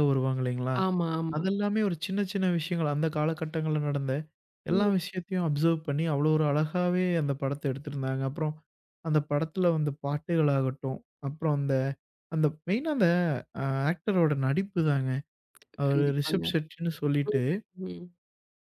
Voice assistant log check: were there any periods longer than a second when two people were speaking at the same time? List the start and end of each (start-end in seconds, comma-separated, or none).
none